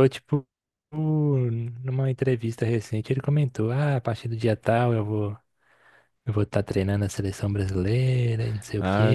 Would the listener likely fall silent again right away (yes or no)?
no